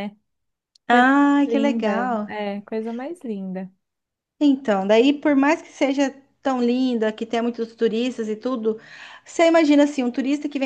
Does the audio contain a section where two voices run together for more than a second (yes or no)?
yes